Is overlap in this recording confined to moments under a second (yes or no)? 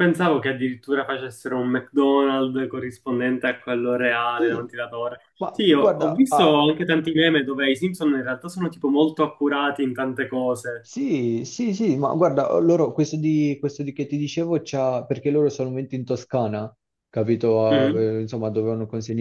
no